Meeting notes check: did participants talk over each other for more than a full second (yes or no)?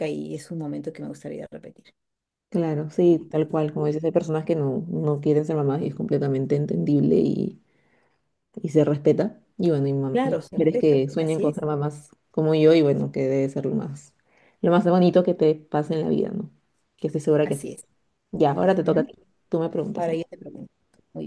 yes